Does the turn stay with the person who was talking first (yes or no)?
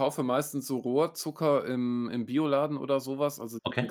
yes